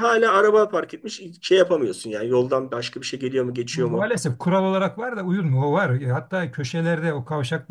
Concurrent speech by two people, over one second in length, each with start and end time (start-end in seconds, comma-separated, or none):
none